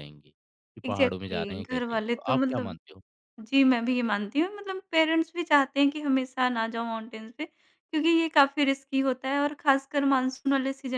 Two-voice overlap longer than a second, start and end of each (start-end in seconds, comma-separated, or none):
0.8-2.8